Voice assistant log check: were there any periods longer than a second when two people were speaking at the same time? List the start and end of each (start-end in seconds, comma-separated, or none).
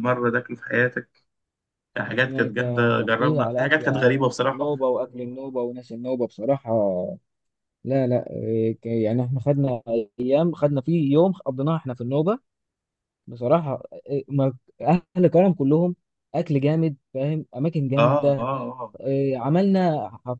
2.2-4.7